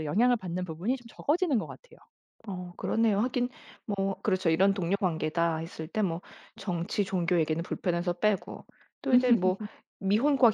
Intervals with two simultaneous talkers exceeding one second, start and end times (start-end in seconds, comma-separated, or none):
none